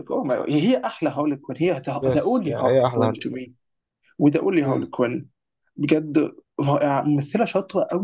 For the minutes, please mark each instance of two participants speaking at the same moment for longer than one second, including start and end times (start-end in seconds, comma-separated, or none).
2.0-3.4